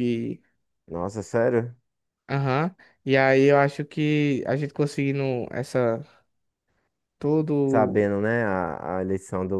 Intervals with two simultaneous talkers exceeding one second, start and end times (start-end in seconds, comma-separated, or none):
none